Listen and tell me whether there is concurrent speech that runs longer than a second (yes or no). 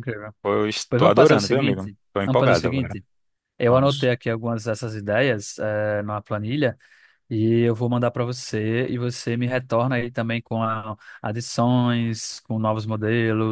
yes